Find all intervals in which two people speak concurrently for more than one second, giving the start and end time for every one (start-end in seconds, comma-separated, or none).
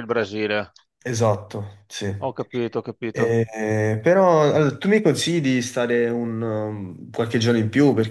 none